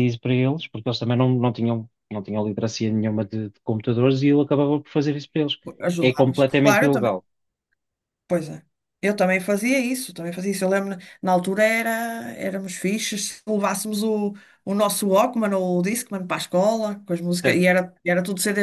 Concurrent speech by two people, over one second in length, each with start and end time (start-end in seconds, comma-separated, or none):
6.0-7.2